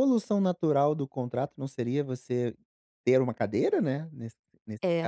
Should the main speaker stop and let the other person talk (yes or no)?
yes